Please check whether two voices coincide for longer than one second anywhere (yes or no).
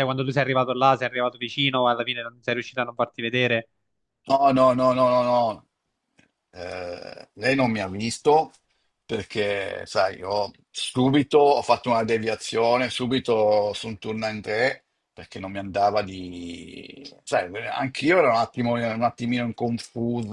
no